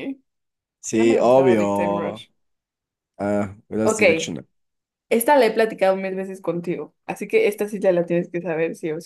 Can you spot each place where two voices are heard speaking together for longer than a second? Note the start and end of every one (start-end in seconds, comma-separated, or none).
0.9-2.2